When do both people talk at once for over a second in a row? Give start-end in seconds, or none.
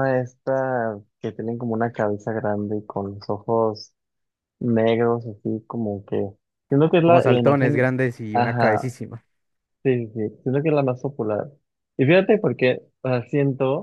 7.0-8.9